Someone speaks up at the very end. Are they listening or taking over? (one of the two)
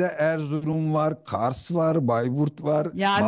taking over